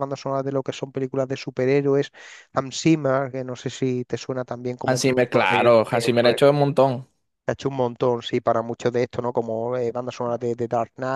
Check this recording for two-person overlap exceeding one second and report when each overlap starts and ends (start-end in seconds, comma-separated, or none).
4.8-6.3